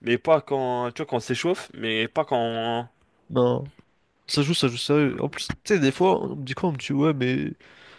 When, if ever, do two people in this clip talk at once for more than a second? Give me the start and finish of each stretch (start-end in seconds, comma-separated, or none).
none